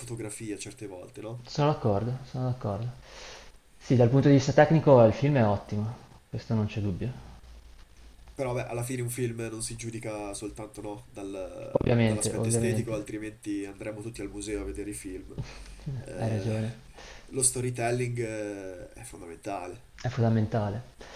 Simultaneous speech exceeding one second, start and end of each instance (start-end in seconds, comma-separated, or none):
11.7-13.1